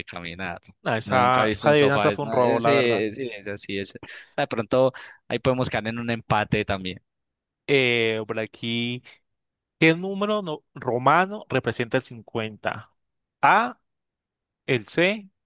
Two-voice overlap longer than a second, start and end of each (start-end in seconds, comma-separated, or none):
1.0-3.0